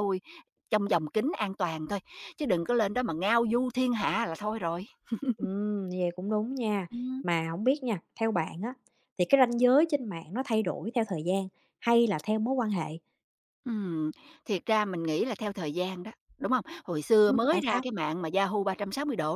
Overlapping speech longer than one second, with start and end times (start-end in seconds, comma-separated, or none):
none